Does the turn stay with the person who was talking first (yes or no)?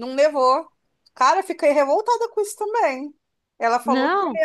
yes